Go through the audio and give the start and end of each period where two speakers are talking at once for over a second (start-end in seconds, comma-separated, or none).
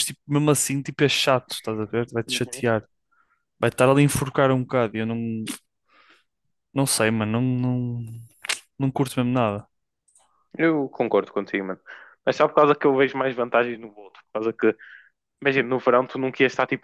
none